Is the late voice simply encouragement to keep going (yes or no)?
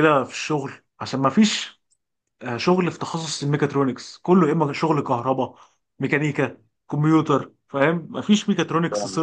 yes